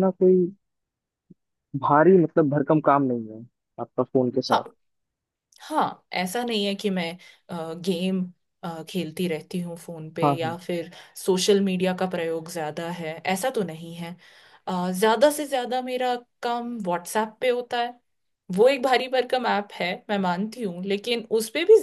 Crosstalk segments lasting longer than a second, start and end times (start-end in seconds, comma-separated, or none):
none